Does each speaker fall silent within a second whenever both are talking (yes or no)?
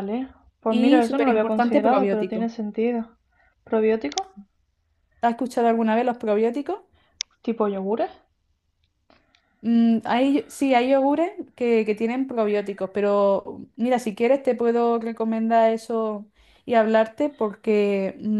no